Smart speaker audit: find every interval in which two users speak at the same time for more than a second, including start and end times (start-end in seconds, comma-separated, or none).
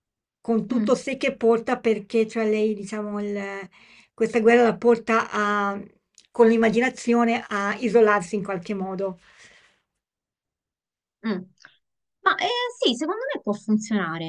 none